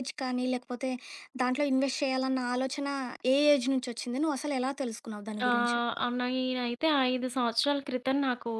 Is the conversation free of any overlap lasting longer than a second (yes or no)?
yes